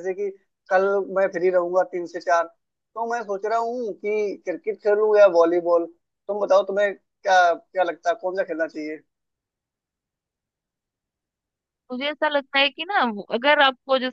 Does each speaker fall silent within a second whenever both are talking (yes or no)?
yes